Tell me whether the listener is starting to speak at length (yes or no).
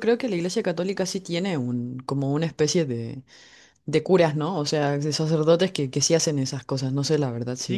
yes